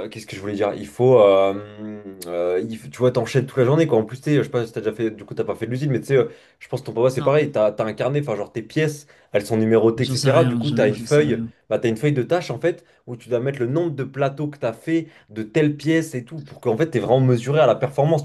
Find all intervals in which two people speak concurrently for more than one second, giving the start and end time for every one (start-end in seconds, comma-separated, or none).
9.9-11.5